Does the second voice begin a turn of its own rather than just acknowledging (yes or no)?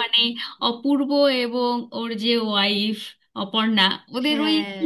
no